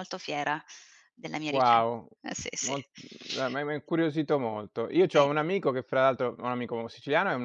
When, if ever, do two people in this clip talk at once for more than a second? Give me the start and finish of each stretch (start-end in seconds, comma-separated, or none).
none